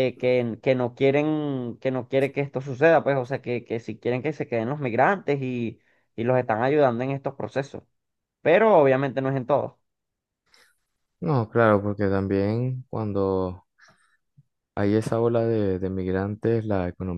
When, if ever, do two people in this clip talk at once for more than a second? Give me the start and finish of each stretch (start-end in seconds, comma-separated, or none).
none